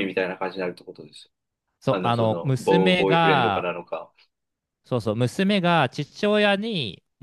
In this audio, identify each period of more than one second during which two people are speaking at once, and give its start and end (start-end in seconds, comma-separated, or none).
1.9-3.7